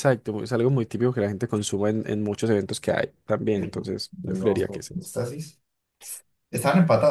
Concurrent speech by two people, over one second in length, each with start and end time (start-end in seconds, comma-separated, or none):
3.5-5.1